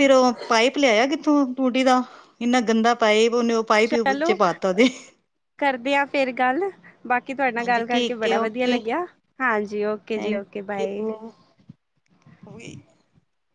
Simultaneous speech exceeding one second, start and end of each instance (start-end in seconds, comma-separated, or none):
7.6-8.8